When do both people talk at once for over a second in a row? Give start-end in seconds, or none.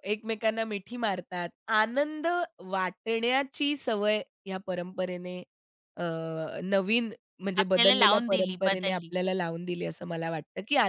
7.6-9.1